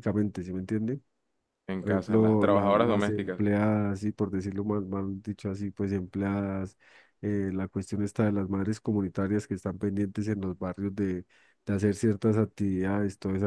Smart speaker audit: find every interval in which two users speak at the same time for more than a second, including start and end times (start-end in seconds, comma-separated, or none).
1.8-3.4